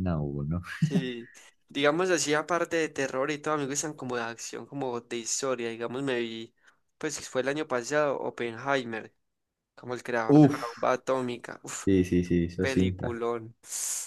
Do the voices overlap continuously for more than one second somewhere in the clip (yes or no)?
no